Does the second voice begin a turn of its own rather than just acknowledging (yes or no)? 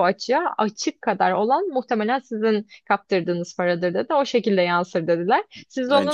no